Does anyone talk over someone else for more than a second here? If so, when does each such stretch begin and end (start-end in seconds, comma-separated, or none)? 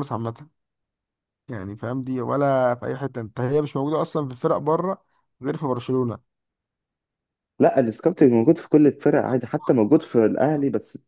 none